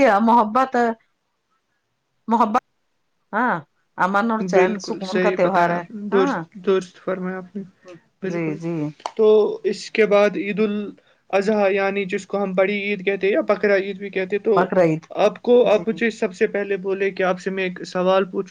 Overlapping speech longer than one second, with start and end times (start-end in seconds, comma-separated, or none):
4.5-6.4